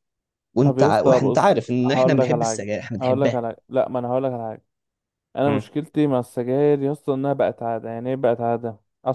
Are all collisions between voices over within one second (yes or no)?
no